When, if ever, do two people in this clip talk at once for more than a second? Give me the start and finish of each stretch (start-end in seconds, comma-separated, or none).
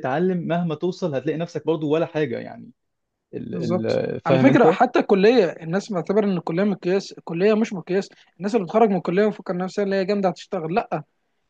3.5-4.8